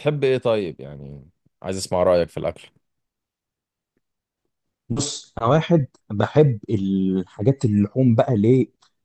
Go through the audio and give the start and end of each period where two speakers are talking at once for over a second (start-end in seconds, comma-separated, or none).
none